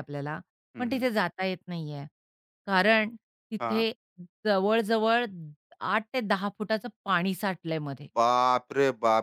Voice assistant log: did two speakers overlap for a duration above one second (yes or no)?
no